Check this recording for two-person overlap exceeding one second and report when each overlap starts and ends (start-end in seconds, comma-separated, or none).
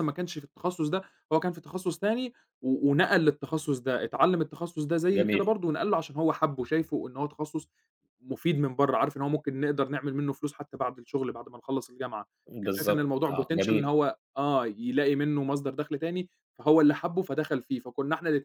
12.6-13.9